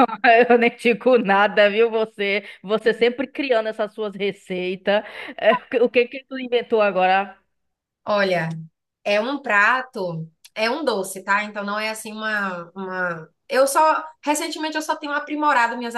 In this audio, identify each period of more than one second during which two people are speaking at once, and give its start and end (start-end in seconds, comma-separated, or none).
none